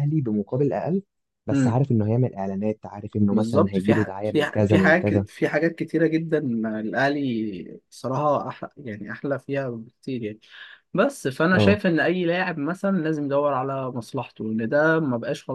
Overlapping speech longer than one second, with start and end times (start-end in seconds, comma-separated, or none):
3.3-5.2